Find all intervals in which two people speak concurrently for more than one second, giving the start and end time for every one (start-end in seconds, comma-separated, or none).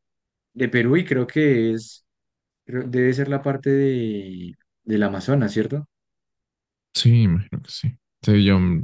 none